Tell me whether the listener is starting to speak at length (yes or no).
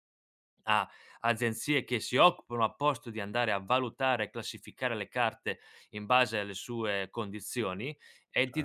yes